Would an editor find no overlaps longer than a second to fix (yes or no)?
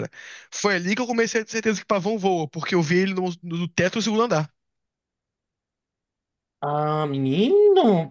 yes